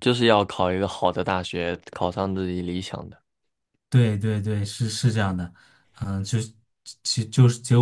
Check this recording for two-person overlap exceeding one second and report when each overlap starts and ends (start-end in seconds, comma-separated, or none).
none